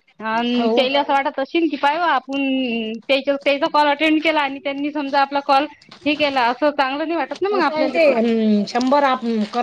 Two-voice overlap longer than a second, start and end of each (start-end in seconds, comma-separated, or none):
none